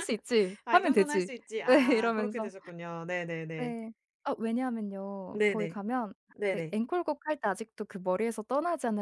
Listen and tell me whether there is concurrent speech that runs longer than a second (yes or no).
yes